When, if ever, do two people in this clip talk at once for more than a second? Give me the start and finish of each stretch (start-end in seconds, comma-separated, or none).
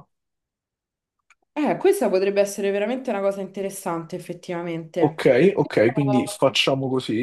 5.0-6.4